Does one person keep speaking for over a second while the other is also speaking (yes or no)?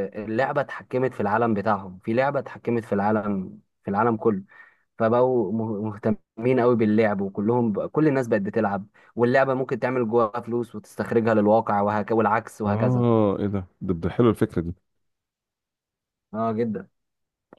no